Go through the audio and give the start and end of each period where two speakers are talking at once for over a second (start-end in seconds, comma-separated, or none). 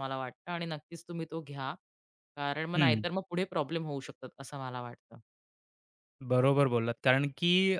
none